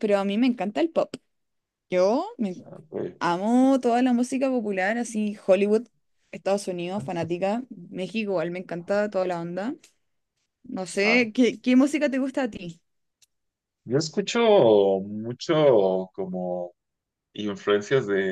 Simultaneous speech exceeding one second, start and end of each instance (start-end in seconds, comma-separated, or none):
none